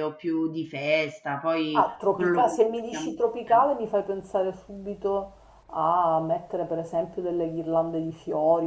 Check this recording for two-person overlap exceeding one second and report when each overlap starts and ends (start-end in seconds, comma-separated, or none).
1.7-3.7